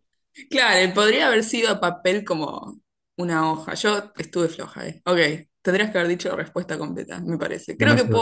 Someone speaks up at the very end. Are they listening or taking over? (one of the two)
listening